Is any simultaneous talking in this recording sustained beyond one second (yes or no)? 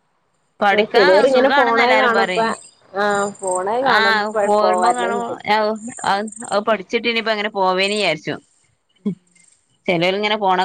yes